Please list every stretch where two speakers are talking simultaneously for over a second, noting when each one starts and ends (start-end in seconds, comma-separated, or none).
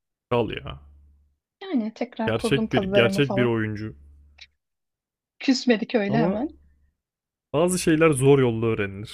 2.3-3.5